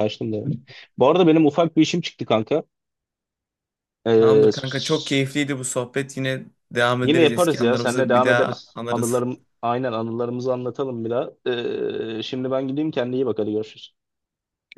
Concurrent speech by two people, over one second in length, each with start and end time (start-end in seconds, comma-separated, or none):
7.0-9.2